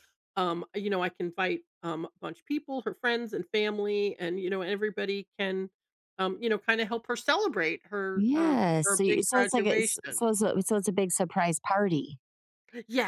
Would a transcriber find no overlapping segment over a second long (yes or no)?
no